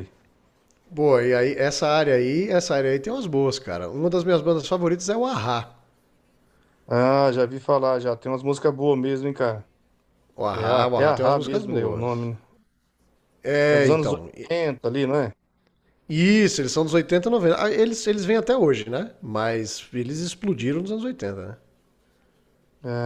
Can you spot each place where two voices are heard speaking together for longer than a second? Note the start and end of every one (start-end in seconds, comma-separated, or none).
10.5-12.3